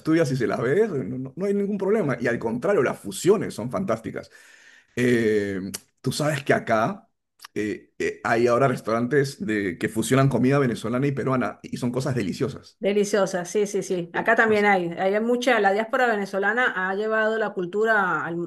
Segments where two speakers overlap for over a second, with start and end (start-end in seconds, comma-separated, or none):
none